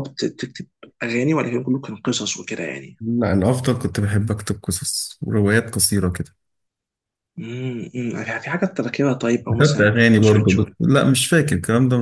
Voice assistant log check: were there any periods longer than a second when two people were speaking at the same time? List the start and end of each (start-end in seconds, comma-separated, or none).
9.5-10.8